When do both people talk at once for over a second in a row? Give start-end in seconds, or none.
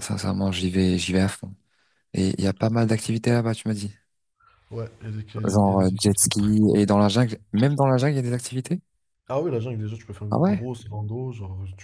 5.4-6.8